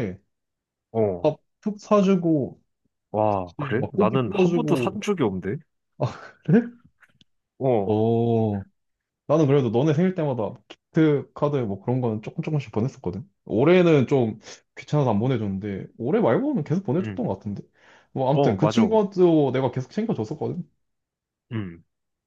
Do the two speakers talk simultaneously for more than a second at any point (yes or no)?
yes